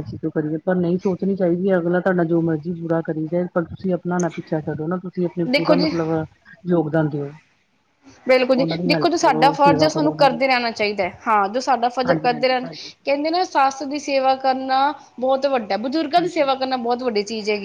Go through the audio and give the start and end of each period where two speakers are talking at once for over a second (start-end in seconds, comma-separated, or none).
8.6-10.4